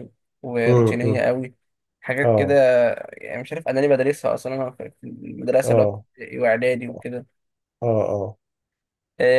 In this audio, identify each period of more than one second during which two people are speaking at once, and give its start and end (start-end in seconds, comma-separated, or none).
none